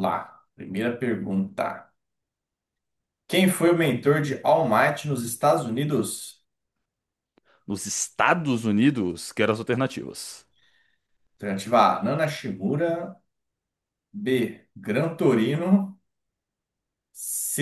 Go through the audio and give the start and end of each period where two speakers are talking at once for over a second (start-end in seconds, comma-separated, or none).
none